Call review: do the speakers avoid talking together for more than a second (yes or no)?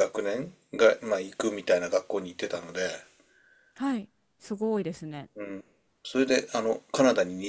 yes